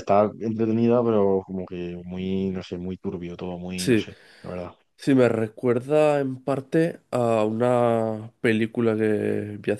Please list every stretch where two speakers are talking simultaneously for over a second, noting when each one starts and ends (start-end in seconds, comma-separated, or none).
none